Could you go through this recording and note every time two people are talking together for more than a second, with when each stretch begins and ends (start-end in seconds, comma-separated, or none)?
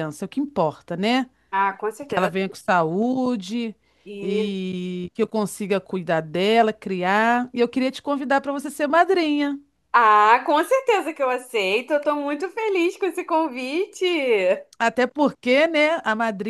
none